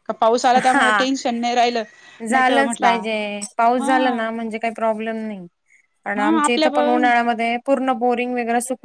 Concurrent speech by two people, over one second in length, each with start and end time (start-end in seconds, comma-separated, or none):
none